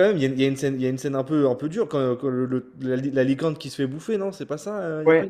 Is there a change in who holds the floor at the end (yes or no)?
yes